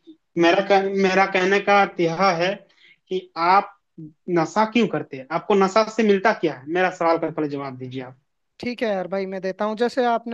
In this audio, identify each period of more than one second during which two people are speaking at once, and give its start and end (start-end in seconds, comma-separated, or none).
none